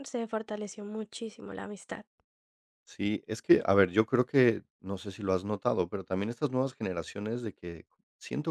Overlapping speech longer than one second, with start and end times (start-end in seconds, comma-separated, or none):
none